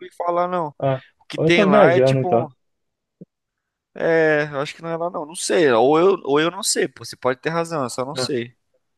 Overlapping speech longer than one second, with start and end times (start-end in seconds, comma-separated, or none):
1.2-2.5